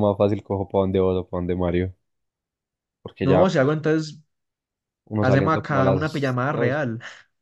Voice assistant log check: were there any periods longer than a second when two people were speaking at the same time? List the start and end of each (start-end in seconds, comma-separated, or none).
5.2-6.8